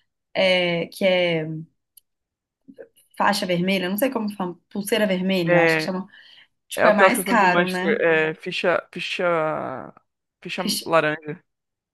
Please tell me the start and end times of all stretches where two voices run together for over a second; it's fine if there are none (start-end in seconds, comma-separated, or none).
6.7-8.0